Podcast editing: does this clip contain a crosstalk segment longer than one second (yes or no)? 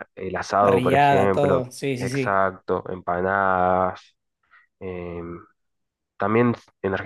yes